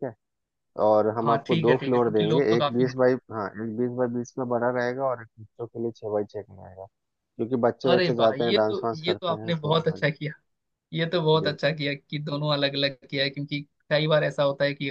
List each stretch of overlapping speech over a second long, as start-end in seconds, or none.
1.2-2.9, 7.9-10.0